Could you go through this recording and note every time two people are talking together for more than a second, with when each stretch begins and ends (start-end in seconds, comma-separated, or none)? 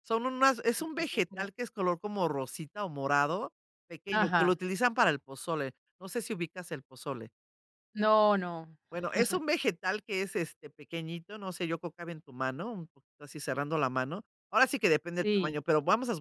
none